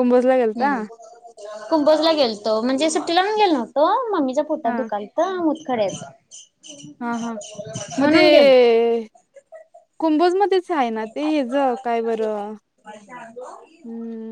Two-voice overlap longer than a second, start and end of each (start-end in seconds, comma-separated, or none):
none